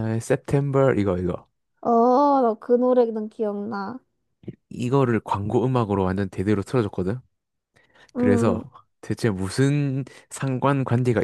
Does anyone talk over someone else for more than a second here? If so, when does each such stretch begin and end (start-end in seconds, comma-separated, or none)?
none